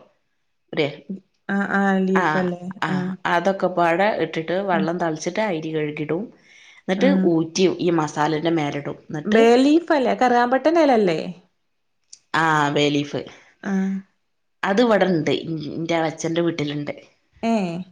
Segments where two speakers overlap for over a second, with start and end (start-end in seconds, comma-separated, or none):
none